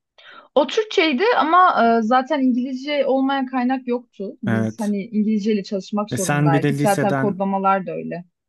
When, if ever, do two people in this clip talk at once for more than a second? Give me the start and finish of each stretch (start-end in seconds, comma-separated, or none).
6.1-7.4